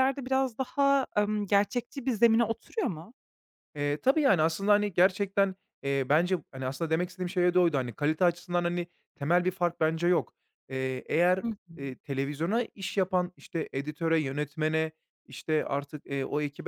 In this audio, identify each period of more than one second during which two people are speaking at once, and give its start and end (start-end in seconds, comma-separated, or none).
none